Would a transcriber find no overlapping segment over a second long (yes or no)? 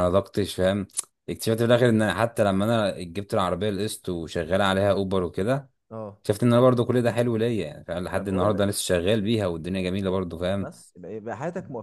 yes